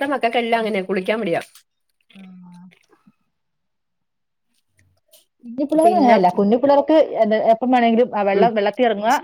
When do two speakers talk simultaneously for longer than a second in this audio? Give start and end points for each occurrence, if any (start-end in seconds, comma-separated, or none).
none